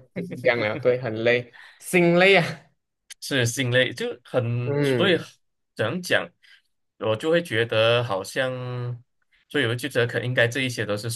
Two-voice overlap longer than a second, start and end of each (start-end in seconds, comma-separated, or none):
none